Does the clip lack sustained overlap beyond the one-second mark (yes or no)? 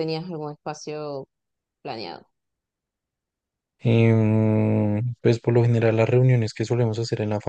yes